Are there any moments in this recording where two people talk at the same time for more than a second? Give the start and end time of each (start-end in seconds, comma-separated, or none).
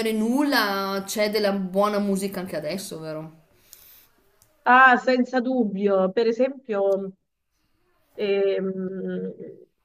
none